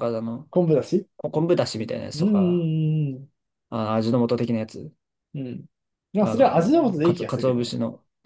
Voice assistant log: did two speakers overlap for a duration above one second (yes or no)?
yes